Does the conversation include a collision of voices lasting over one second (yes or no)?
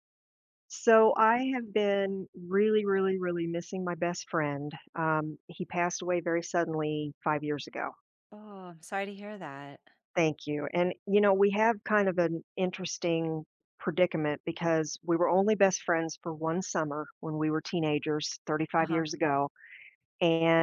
no